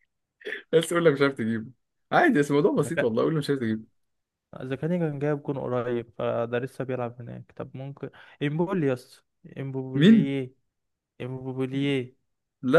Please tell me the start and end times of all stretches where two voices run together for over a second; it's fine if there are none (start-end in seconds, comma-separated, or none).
none